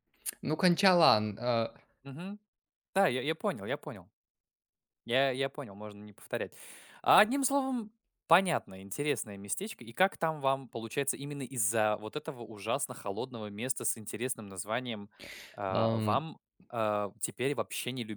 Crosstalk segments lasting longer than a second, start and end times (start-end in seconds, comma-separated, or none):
none